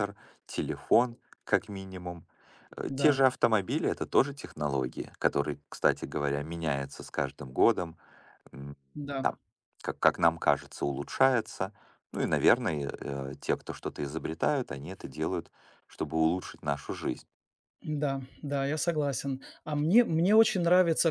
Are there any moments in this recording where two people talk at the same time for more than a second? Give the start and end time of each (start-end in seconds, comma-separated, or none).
none